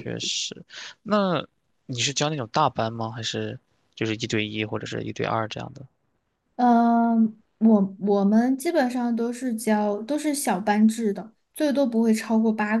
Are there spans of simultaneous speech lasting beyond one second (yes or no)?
no